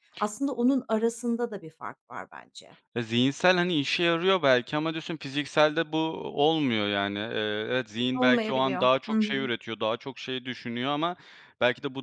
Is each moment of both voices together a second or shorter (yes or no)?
no